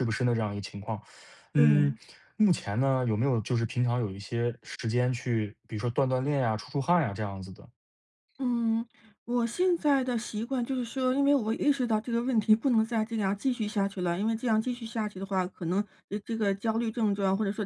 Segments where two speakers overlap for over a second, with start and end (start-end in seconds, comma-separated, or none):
none